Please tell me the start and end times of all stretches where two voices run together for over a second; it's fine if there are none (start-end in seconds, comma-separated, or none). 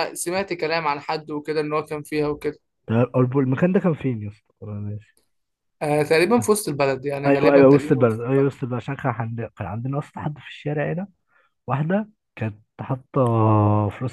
7.3-8.5